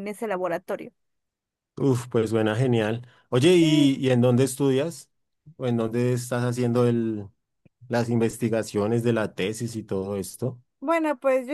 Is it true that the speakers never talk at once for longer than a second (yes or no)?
yes